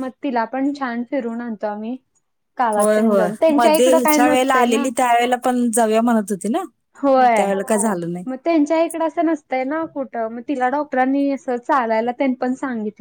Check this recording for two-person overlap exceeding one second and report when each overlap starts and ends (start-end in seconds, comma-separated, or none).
2.8-4.9